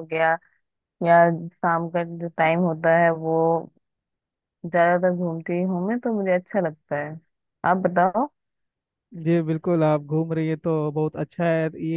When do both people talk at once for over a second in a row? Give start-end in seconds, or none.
none